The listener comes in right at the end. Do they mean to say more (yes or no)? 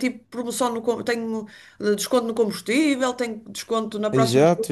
yes